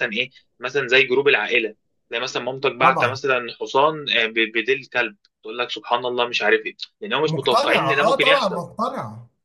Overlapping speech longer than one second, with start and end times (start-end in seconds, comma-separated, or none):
7.2-8.6